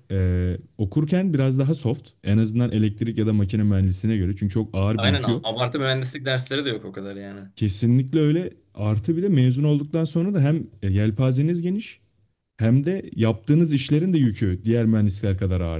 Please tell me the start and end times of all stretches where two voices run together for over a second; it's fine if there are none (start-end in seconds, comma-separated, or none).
none